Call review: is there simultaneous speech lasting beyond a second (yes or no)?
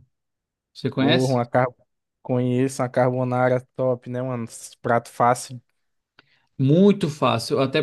no